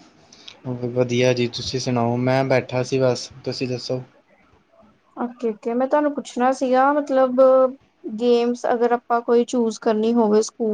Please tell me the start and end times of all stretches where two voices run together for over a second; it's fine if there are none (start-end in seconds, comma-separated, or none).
none